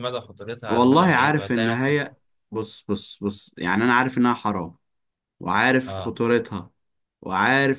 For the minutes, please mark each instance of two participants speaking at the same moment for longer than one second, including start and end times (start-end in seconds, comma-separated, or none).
0.7-2.0